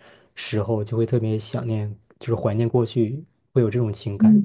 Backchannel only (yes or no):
no